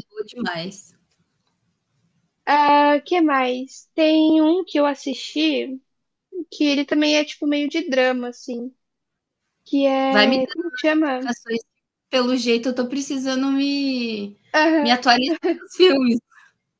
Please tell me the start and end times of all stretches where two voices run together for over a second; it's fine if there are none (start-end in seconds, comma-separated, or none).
10.1-11.3